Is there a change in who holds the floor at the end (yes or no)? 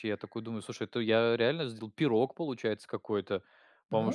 no